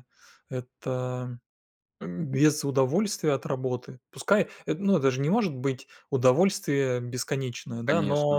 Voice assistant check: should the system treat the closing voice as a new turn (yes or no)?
no